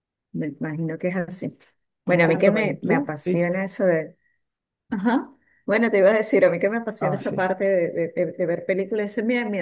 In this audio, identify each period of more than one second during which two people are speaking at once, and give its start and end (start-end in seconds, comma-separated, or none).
2.1-3.5